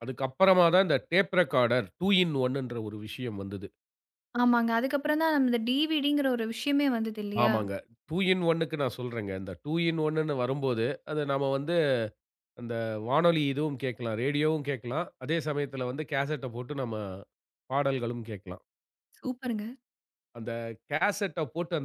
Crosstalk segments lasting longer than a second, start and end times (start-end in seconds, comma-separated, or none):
none